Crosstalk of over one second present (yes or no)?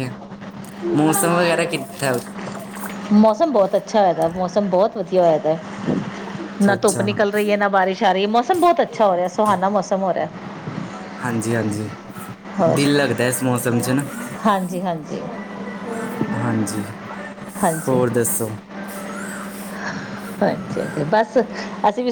no